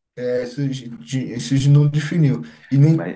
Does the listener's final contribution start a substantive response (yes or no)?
no